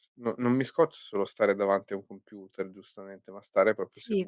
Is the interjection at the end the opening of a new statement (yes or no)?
yes